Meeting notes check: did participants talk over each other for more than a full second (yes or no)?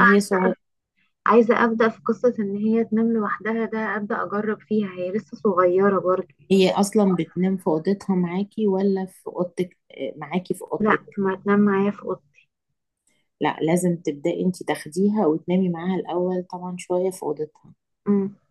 no